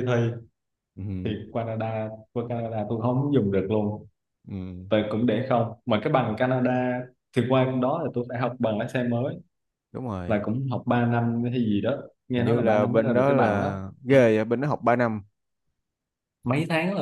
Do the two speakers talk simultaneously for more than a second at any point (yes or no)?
yes